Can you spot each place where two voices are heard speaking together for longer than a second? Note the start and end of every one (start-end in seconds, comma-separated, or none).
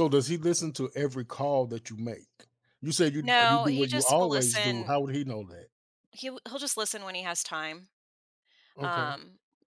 3.2-4.9